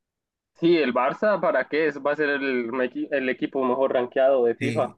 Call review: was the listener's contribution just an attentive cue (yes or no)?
no